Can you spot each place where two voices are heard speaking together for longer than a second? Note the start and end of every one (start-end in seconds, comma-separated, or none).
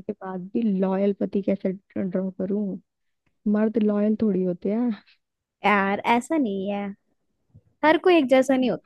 none